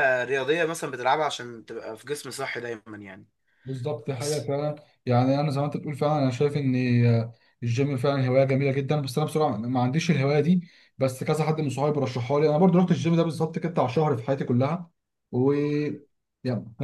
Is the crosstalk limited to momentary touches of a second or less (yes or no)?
yes